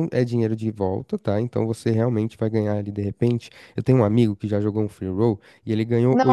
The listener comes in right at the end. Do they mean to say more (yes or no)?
yes